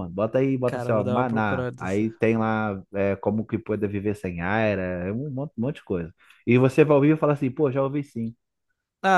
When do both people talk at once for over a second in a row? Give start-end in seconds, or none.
0.7-2.1